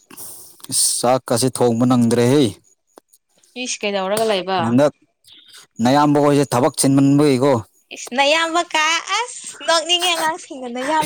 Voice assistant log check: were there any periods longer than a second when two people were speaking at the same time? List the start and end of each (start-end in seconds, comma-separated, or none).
none